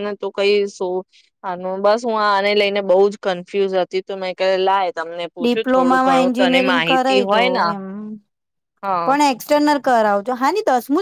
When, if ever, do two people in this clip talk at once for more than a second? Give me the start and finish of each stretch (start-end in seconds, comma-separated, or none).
5.4-7.6